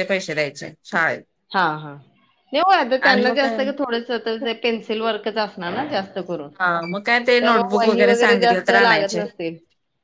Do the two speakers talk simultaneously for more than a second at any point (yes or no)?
yes